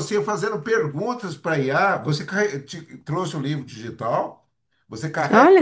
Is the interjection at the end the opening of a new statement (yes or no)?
no